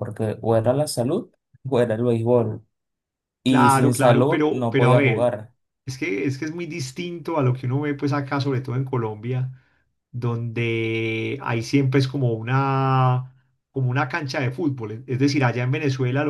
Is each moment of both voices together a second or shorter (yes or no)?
no